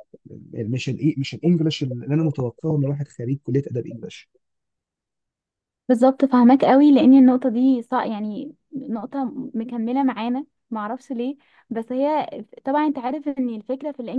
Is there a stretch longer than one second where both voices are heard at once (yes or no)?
no